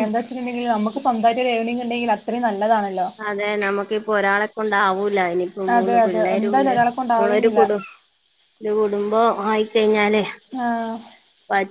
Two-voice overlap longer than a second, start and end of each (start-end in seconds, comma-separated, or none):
5.8-7.7